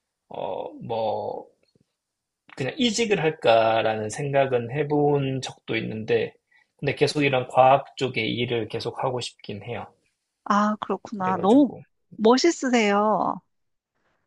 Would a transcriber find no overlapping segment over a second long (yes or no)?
yes